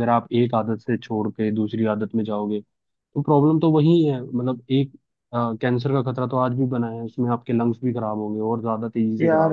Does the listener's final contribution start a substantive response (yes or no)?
yes